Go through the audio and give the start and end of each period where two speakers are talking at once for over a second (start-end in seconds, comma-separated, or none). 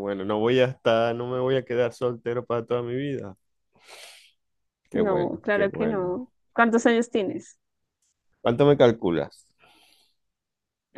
4.9-7.0